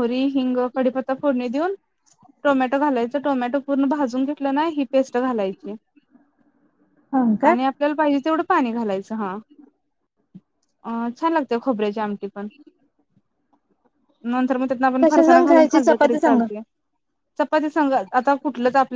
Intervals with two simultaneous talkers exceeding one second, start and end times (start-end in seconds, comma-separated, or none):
15.0-16.4